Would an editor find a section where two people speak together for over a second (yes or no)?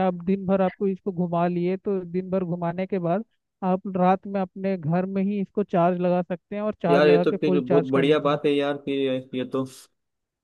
yes